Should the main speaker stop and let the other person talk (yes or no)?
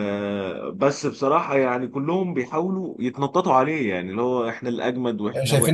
no